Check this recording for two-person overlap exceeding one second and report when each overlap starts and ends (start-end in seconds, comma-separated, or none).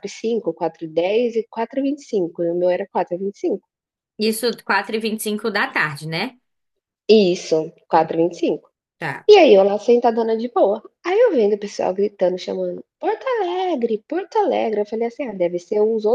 none